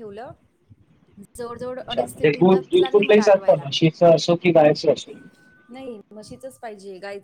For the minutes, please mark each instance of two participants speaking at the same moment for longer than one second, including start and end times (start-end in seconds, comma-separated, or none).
1.8-3.6